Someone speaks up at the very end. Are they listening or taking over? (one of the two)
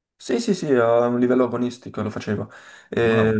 listening